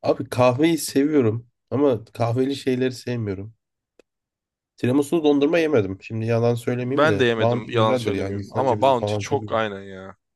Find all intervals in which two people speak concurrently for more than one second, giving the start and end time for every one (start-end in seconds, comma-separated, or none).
6.8-9.6